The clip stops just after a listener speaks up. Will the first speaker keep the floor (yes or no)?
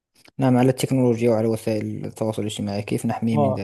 no